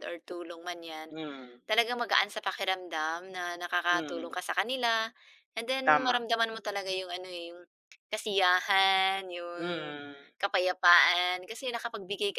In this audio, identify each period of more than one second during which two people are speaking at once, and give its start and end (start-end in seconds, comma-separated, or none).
none